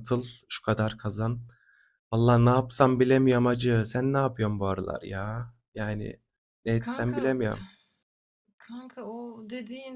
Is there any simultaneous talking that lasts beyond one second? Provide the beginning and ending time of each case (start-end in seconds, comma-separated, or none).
none